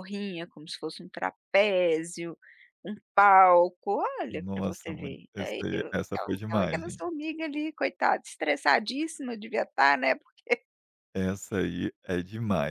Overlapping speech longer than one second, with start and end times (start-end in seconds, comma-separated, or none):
4.3-7.0